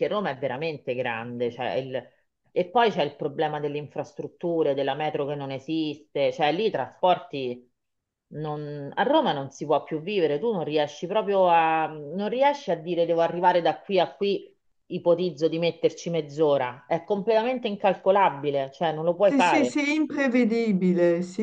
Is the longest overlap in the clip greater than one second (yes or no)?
no